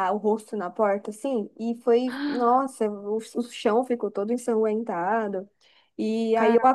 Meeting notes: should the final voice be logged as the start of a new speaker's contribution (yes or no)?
no